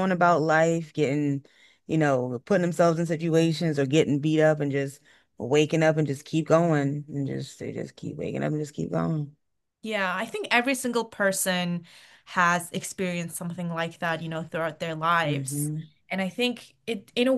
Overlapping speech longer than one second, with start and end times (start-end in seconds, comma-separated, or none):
none